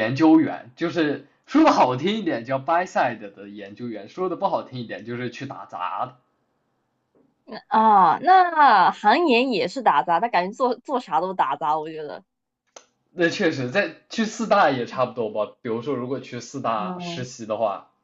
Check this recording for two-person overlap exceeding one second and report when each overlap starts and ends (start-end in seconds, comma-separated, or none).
none